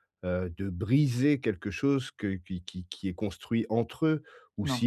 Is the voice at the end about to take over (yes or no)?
no